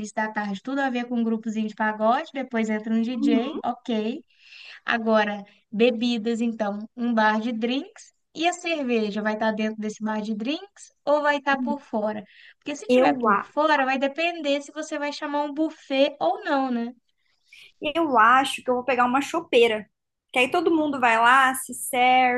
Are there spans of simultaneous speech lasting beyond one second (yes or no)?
no